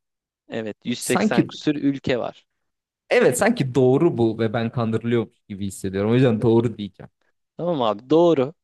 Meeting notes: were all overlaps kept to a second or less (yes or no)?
yes